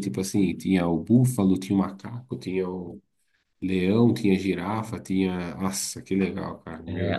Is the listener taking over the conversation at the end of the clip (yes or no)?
yes